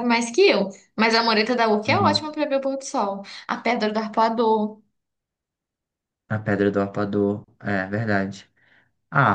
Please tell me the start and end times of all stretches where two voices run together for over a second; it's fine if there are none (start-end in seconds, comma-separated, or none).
none